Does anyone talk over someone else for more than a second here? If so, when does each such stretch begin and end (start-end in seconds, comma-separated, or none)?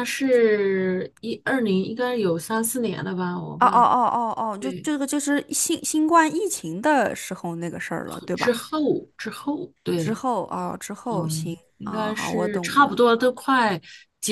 11.1-13.0